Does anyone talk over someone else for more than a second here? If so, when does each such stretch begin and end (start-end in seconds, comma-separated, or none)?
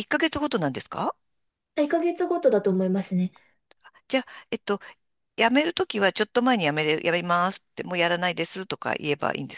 none